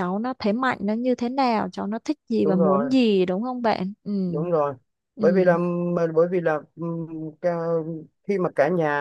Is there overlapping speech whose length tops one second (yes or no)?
no